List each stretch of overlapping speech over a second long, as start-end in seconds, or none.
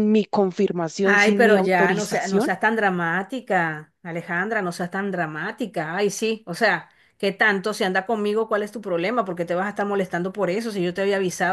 1.0-2.5